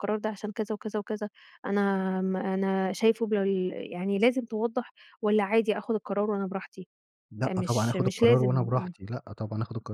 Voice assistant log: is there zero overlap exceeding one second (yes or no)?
no